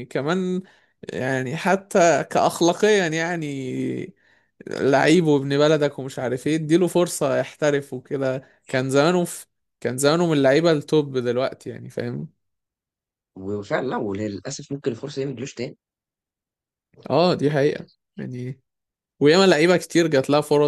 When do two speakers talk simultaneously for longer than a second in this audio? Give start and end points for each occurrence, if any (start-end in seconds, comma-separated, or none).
none